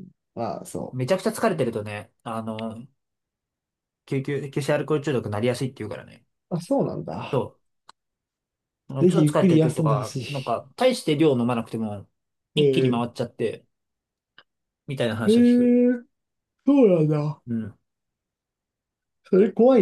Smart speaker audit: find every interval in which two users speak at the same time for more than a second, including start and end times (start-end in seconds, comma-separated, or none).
9.0-10.6